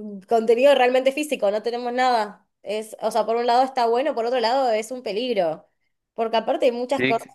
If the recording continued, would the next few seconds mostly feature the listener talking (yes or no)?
no